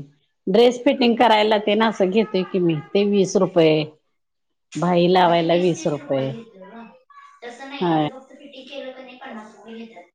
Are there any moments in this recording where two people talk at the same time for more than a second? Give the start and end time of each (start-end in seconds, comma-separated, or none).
none